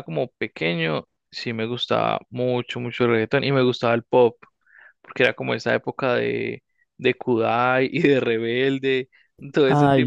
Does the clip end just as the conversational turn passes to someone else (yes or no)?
no